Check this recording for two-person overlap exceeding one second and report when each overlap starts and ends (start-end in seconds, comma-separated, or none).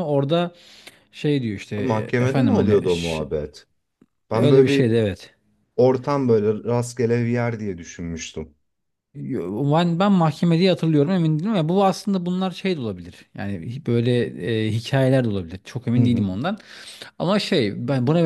1.8-3.2